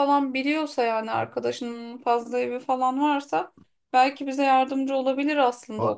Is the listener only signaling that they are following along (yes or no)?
no